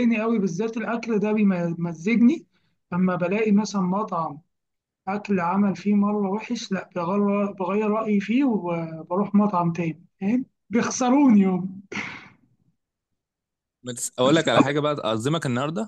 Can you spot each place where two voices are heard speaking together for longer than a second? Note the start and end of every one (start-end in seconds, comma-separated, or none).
none